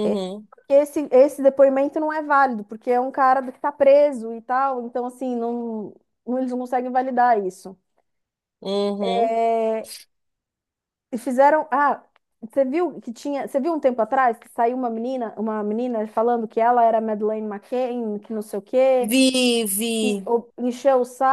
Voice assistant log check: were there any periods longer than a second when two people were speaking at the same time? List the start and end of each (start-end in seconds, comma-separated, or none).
none